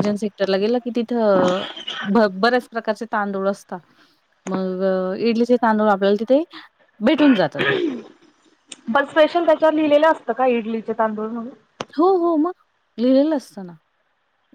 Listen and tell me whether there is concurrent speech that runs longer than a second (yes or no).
no